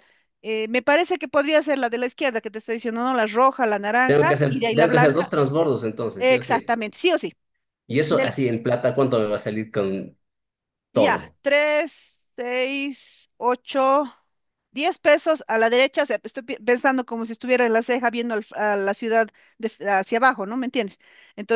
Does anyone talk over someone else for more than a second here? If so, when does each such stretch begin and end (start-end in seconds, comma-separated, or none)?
4.0-5.3